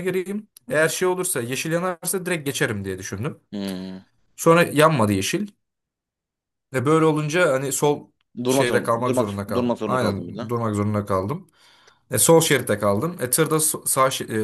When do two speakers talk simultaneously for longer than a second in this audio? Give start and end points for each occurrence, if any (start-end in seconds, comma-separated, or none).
8.5-10.5